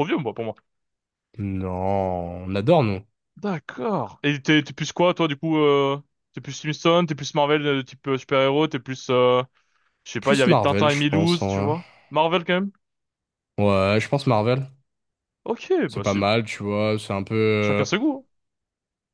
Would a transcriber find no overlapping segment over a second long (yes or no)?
no